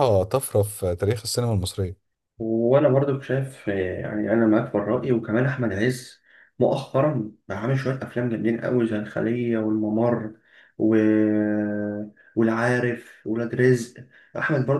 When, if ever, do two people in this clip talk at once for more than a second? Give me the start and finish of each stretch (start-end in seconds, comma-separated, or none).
none